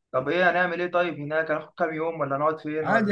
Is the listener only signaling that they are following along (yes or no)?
no